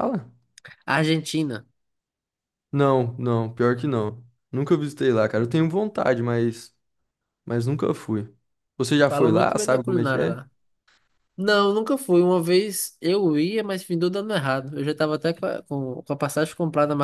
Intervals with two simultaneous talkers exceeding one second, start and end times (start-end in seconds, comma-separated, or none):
9.1-10.4